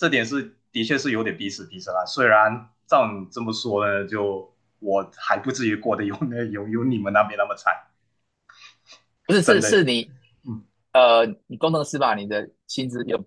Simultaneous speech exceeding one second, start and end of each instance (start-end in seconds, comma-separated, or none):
none